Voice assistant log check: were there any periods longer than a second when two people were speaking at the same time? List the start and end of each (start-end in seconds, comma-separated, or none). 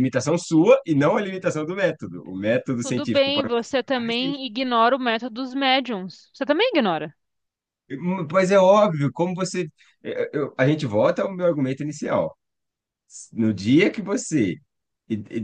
2.8-4.0